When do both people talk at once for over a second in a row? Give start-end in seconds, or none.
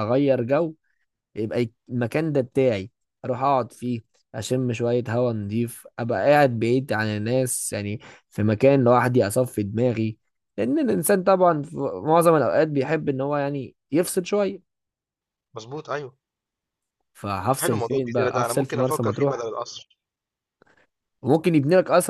17.6-19.5